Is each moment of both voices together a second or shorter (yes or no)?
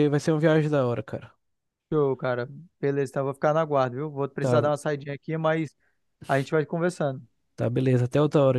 yes